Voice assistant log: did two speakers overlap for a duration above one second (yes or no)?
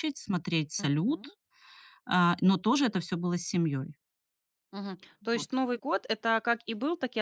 no